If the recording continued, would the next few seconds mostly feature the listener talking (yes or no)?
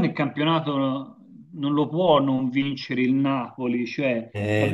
no